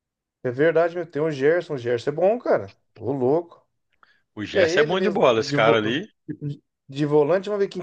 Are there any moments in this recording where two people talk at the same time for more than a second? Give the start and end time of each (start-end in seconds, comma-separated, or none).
4.5-6.0